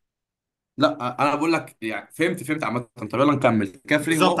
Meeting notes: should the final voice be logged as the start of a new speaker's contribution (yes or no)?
yes